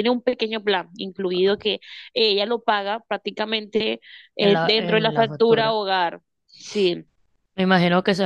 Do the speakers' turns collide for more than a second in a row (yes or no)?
yes